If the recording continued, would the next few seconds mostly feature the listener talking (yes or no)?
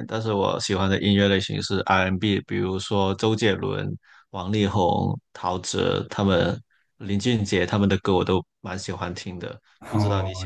yes